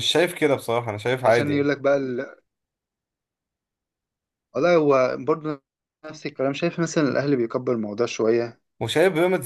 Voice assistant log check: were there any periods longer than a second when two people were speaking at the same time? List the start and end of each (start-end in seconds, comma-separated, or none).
none